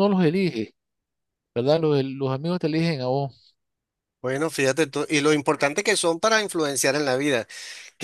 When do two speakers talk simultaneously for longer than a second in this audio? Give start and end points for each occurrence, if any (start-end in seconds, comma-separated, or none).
none